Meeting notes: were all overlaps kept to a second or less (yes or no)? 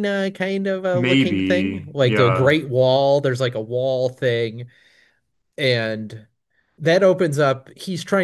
no